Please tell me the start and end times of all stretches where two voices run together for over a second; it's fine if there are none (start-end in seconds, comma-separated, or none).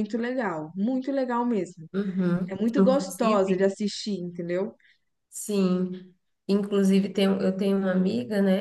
2.5-3.7